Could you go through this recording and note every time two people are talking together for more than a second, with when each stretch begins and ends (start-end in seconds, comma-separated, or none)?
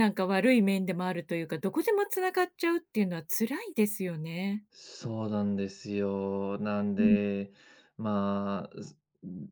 none